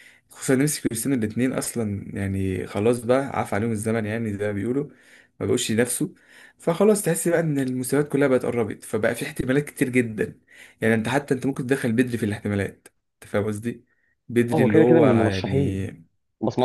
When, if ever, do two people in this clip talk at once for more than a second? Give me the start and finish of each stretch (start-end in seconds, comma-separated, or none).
14.5-15.8